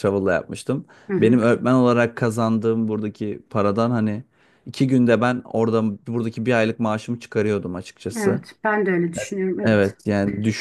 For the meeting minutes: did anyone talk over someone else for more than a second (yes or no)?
no